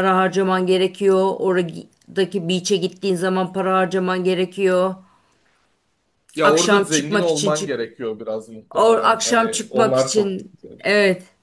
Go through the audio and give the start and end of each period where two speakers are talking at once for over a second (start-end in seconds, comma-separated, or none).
6.4-7.8, 8.8-10.8